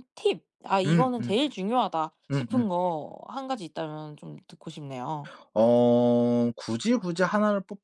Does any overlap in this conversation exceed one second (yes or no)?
no